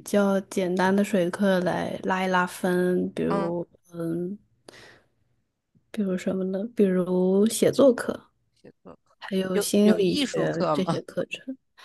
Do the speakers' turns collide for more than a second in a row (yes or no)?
yes